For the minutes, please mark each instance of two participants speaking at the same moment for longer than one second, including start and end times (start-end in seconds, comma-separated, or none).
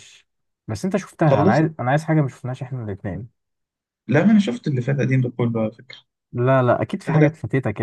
none